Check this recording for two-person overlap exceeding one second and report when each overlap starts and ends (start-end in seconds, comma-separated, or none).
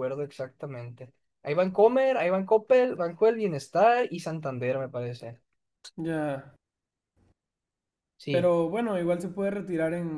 none